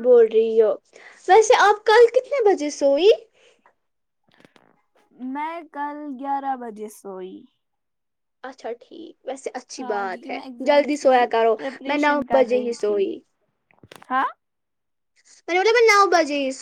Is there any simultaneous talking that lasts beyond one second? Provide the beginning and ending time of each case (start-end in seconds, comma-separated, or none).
9.8-13.0